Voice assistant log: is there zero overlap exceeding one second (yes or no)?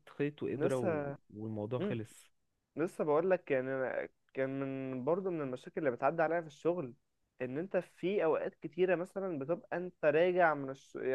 yes